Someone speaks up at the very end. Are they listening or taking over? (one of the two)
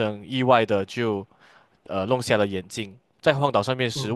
listening